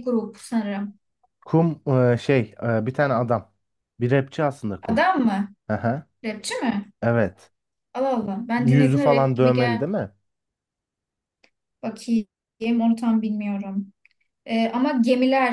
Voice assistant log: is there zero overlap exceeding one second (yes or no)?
no